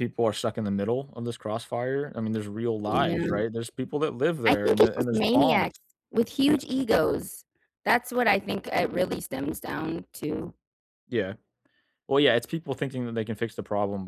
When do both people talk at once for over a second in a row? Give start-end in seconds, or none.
4.5-5.7